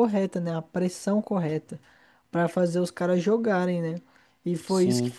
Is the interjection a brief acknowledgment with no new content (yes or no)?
yes